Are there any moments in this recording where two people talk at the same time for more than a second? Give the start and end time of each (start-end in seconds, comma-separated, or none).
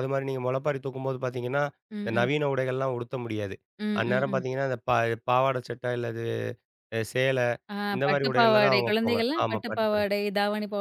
7.9-10.1